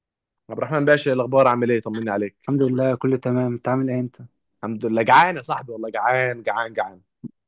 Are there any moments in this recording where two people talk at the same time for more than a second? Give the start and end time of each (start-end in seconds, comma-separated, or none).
none